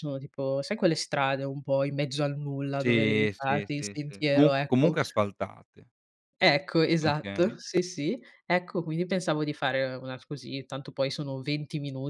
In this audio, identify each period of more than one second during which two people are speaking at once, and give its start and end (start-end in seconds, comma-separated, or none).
2.8-5.0